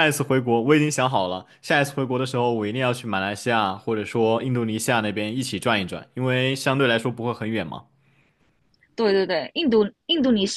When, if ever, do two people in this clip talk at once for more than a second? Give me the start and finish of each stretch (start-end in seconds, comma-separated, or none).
none